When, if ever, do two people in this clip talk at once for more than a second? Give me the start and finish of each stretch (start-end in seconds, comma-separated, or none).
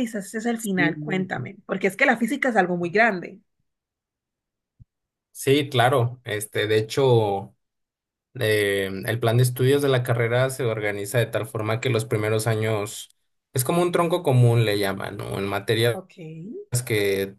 none